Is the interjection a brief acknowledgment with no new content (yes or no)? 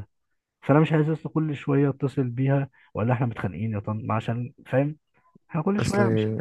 yes